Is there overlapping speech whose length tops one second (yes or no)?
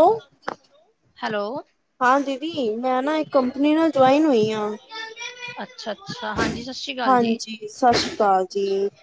no